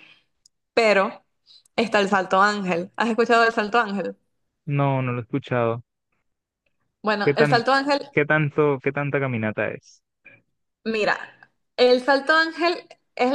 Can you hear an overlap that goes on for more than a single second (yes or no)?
no